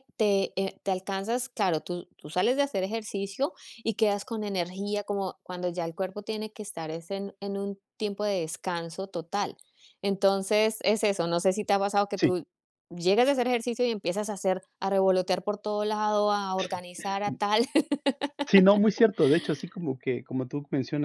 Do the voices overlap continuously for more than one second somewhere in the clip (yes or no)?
no